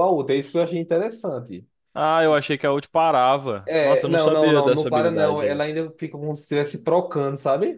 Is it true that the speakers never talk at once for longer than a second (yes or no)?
no